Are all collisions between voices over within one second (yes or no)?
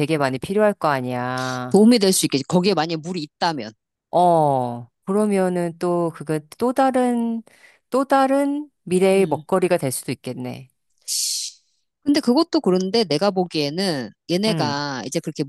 yes